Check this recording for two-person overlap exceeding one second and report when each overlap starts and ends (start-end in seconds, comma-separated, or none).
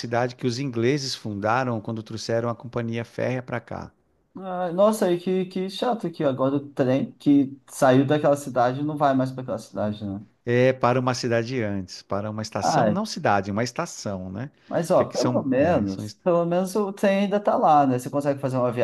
14.9-16.2